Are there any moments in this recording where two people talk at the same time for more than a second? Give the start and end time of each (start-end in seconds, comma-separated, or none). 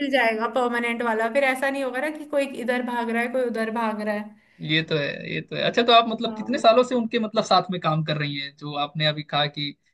none